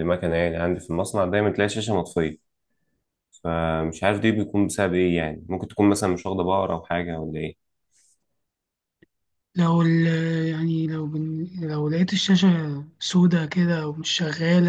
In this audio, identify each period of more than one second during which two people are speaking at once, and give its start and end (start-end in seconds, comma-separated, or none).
none